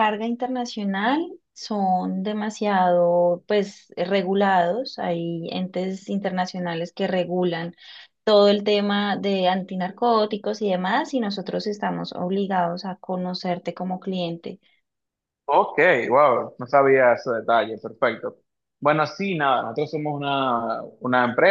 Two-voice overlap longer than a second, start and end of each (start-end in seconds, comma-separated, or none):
none